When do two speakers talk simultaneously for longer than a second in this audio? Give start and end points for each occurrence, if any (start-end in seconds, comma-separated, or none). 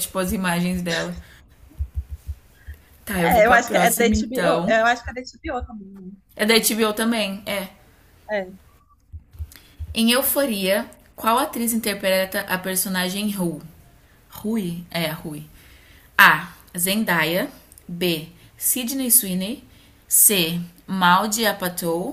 3.2-4.8